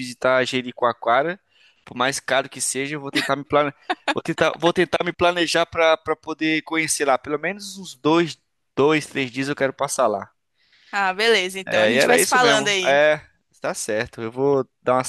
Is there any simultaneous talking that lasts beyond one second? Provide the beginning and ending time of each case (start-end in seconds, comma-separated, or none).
11.7-13.0